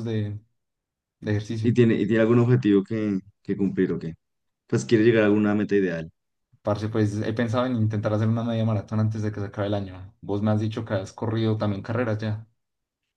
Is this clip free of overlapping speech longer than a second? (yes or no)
yes